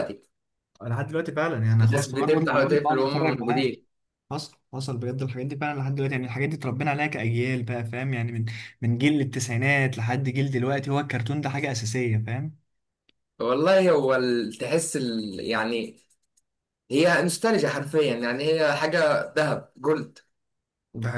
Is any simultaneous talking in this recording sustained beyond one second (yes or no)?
yes